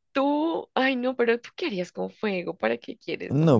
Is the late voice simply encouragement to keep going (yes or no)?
no